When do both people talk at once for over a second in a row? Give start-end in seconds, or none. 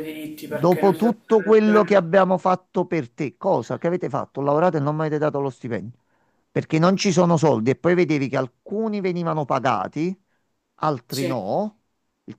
0.5-2.0